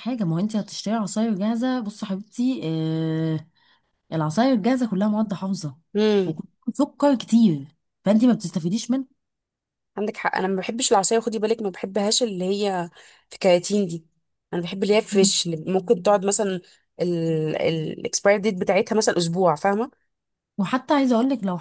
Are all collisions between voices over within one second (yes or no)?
yes